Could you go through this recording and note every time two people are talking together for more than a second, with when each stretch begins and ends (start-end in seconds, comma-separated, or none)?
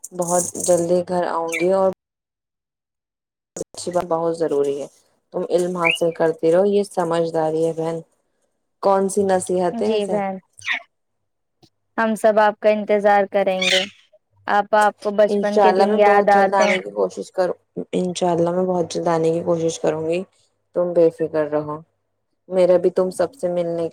15.3-16.8